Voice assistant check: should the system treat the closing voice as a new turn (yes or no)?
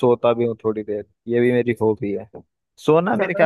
no